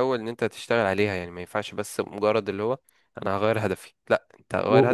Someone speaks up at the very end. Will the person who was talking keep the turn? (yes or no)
no